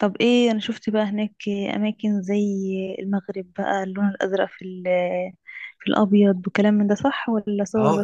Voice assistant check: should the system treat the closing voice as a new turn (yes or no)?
yes